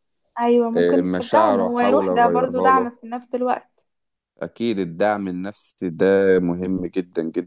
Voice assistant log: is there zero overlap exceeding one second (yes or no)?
no